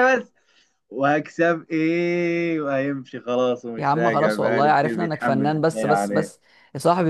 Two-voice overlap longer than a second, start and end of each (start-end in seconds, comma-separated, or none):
3.8-6.3